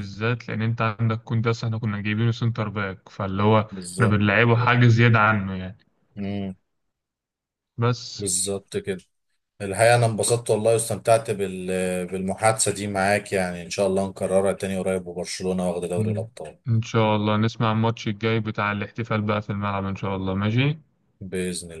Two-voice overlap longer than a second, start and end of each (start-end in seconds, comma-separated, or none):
none